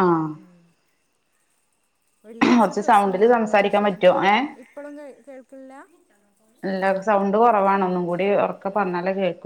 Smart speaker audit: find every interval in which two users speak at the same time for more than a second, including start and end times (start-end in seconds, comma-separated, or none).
2.6-4.1